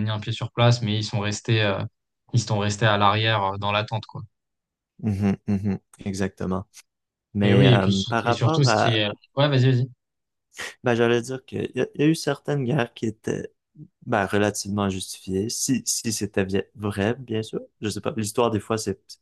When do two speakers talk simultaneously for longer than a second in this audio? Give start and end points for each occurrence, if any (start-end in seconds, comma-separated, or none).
7.4-9.1